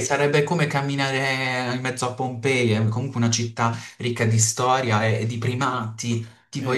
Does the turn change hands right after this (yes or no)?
yes